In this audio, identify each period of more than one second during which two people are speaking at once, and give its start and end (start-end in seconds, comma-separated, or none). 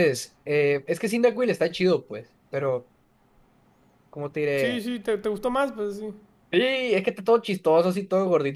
none